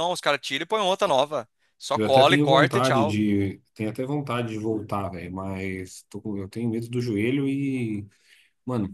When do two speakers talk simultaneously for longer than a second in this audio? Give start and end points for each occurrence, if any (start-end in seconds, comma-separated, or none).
1.9-3.2